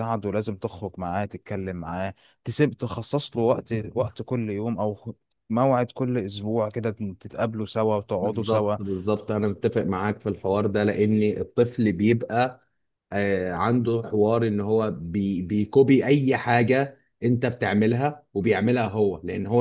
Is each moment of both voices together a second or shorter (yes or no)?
yes